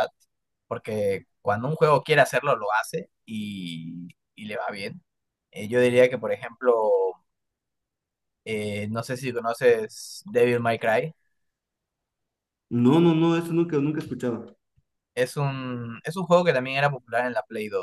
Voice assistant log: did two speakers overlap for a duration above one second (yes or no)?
no